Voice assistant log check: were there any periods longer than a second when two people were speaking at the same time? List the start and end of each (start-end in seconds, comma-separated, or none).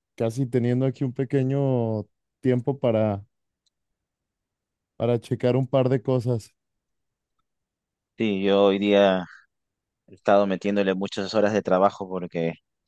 none